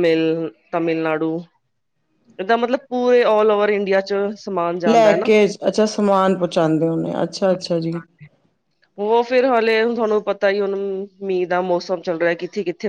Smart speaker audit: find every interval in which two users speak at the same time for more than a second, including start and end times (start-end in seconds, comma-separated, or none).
none